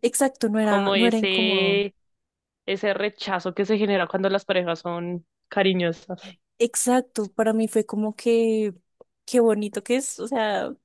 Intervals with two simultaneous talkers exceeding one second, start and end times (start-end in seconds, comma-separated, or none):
0.6-1.8